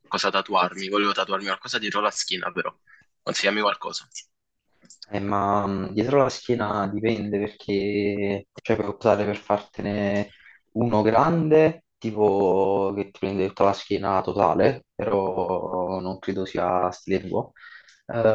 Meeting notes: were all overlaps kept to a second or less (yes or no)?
yes